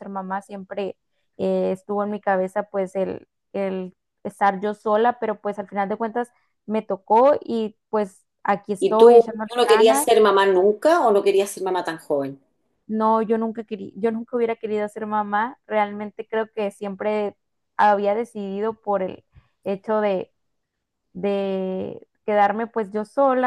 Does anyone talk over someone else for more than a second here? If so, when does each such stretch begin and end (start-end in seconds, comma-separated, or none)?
8.8-10.1